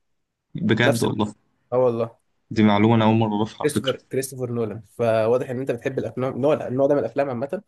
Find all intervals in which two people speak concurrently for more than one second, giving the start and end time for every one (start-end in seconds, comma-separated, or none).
none